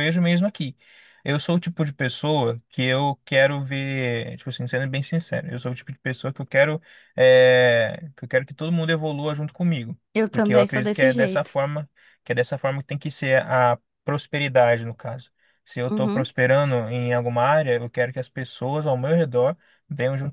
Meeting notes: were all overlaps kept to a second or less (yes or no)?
no